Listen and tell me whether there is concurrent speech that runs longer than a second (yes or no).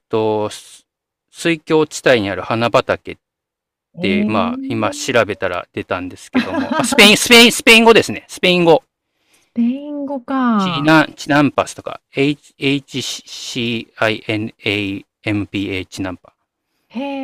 yes